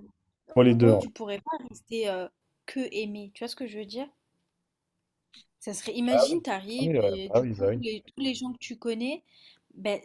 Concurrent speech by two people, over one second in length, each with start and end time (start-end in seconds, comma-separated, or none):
6.1-7.8